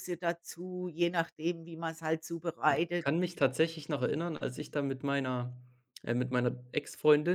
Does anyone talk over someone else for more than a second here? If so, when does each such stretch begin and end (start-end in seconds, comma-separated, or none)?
none